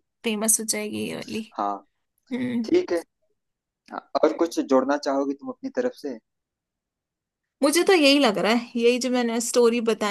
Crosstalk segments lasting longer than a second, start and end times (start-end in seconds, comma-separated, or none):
none